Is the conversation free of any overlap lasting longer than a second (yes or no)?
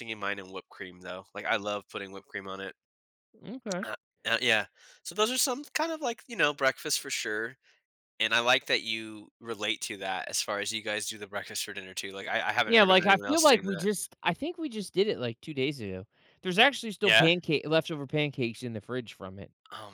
no